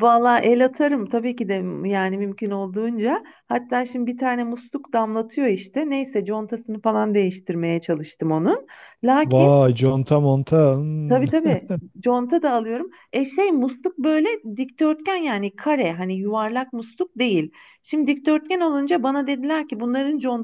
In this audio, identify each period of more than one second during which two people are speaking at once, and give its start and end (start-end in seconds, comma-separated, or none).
none